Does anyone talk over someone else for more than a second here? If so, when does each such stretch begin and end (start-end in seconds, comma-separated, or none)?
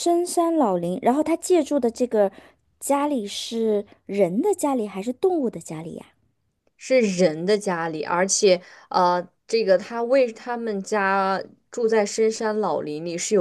none